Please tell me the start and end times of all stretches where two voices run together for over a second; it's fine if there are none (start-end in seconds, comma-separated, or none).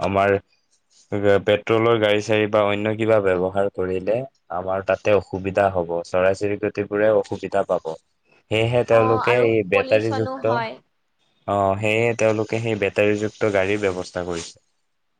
8.9-10.7